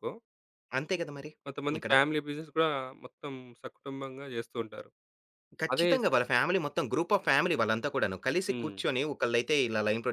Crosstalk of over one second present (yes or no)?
no